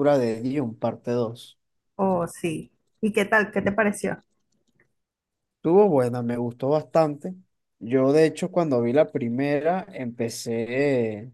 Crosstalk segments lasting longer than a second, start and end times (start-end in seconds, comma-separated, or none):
none